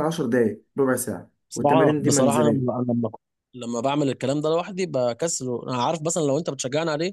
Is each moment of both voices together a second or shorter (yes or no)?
no